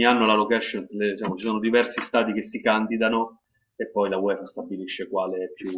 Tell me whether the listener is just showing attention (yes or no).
no